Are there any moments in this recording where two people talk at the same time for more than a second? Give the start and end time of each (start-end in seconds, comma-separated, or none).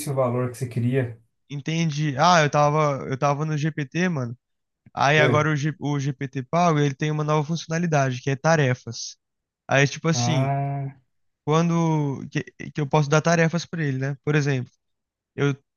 none